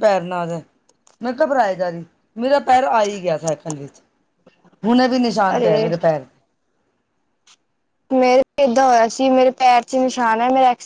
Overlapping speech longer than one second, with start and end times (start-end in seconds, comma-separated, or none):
none